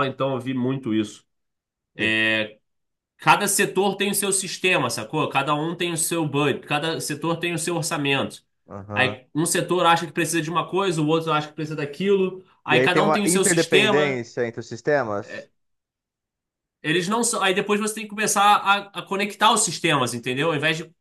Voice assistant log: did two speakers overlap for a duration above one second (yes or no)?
yes